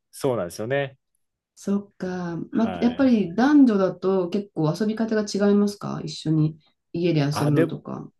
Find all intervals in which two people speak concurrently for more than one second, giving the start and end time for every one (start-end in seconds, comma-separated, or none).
none